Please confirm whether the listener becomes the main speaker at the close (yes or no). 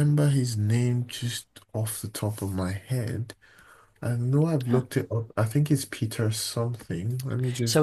yes